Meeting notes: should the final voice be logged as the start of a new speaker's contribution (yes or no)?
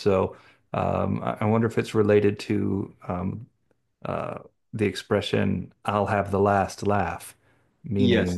no